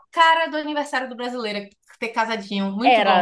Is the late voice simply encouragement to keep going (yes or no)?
no